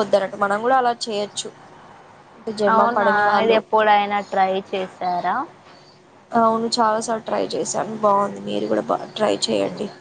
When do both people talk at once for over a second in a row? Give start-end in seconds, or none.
none